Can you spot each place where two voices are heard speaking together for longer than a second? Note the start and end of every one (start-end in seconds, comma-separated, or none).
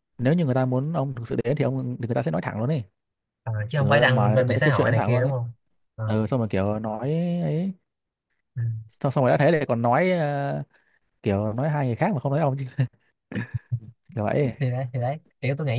3.8-5.3